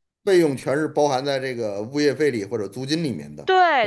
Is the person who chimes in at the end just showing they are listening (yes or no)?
no